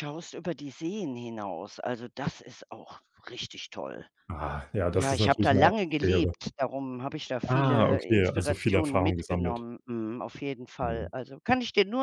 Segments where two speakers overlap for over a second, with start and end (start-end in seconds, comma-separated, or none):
5.0-6.3, 7.5-9.7